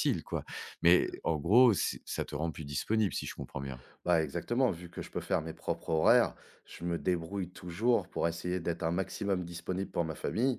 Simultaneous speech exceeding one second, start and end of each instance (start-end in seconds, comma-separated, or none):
none